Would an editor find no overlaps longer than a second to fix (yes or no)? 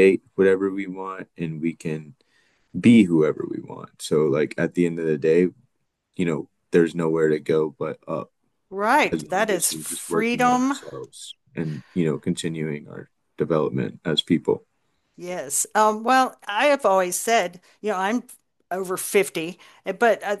no